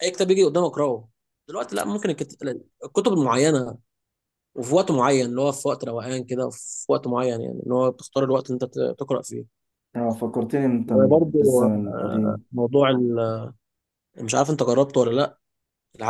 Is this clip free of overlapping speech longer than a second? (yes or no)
no